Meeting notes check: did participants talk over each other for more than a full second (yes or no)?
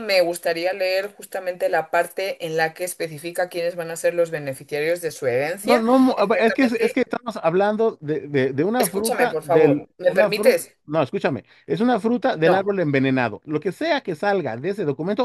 yes